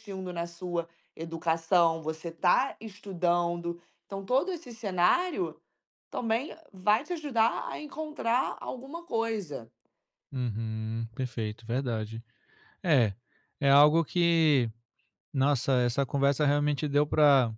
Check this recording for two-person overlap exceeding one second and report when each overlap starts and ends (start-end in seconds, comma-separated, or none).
none